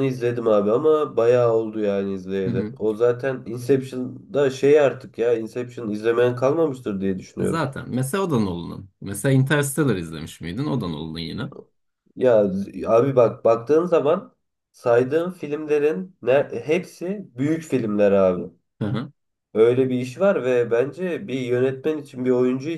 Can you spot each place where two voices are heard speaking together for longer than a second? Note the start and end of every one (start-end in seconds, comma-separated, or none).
none